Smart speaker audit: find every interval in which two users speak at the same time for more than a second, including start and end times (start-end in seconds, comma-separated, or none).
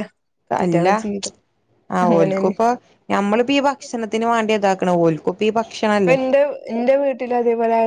none